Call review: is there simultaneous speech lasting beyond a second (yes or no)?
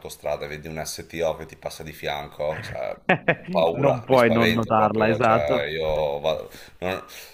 yes